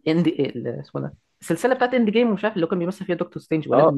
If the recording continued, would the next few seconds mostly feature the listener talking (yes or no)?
yes